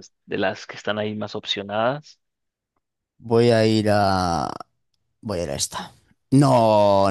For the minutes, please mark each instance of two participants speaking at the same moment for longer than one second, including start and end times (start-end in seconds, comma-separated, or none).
none